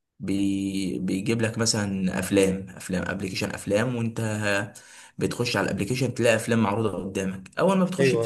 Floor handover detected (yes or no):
no